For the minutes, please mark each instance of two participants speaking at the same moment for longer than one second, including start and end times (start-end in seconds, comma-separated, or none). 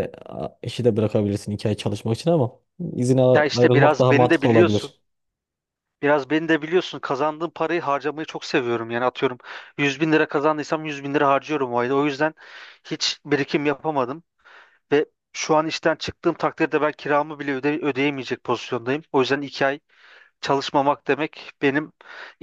3.4-4.9